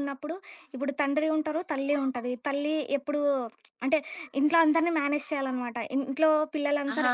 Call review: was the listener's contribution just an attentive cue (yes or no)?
yes